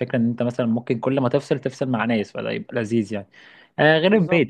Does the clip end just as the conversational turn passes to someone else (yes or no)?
no